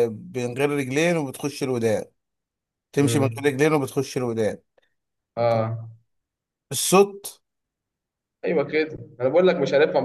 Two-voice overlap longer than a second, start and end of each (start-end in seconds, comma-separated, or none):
none